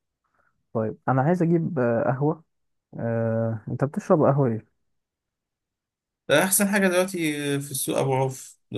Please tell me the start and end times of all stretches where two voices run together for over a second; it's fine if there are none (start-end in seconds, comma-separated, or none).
none